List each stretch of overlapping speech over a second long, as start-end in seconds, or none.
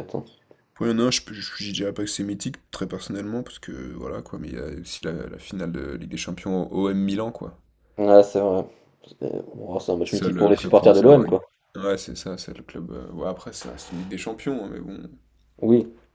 10.1-11.4